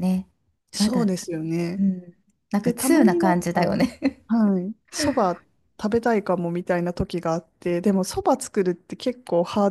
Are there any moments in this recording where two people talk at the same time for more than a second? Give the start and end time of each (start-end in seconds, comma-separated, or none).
2.6-3.9